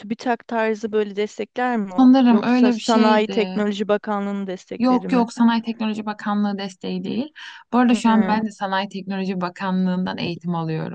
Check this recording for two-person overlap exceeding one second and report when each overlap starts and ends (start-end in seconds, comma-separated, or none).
2.0-3.6